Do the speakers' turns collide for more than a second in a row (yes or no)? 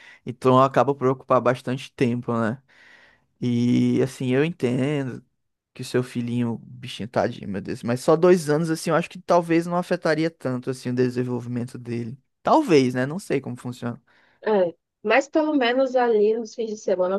no